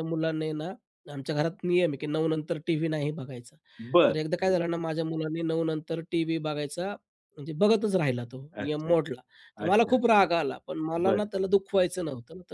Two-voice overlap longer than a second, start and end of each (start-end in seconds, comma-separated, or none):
none